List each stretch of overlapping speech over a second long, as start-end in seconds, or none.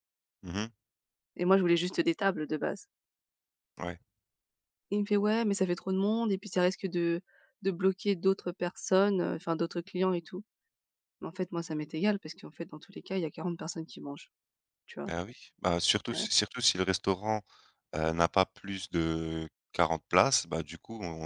none